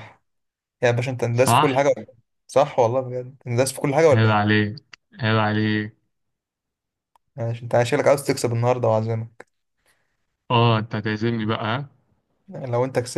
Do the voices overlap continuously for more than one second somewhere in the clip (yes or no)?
no